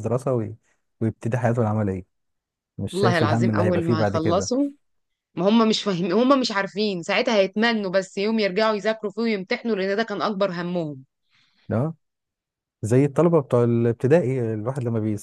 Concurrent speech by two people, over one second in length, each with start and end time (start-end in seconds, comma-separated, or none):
2.9-4.5